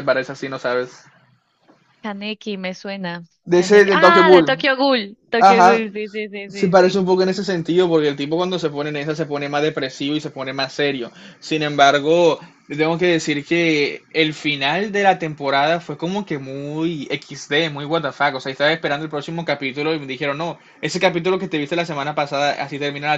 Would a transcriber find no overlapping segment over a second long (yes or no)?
no